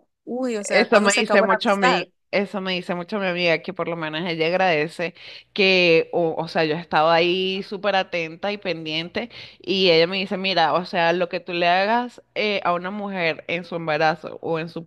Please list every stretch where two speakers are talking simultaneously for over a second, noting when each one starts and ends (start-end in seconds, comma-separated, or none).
0.6-2.1